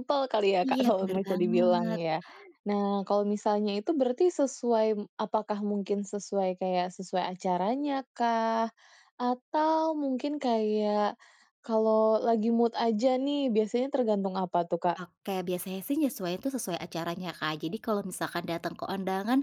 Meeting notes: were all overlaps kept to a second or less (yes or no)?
no